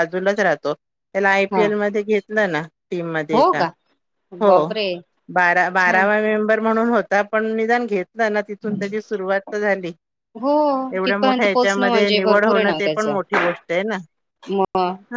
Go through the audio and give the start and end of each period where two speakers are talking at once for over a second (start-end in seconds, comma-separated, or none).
11.0-13.2